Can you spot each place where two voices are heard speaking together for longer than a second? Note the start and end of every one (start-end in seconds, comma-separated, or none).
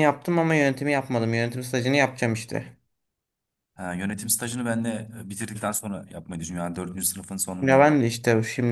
none